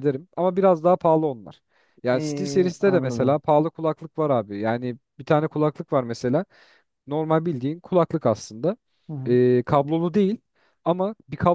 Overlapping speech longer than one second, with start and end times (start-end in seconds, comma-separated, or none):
2.1-3.4